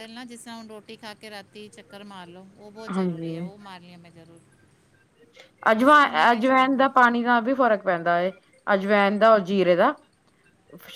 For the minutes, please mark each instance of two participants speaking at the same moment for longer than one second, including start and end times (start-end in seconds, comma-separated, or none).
none